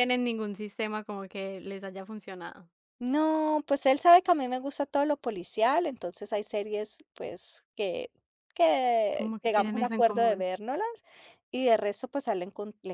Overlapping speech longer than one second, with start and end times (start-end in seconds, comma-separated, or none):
9.2-10.5